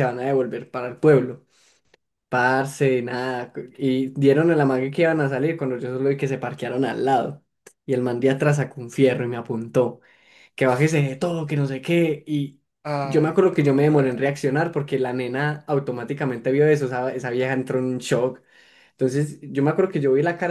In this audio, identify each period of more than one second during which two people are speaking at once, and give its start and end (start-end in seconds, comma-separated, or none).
13.0-14.4